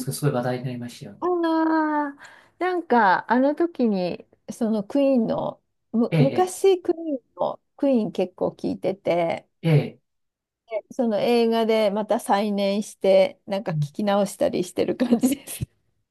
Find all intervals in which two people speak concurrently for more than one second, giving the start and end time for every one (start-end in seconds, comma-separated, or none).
none